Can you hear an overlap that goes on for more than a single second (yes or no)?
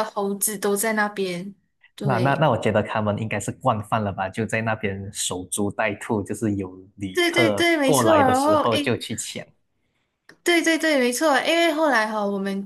yes